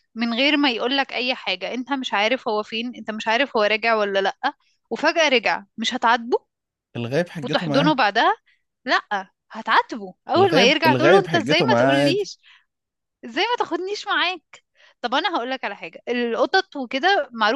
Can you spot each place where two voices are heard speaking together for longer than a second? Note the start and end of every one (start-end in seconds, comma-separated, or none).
10.4-12.3